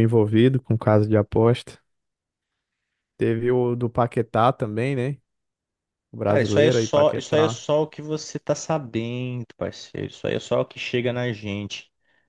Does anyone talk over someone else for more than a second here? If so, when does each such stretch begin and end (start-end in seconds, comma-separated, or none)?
6.2-7.6